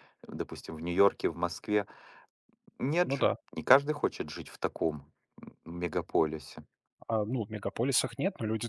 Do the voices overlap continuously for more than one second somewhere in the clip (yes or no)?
no